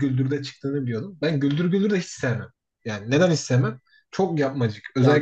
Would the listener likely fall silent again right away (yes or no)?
yes